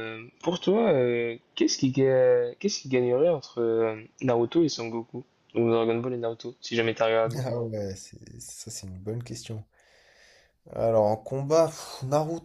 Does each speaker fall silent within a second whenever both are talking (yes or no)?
yes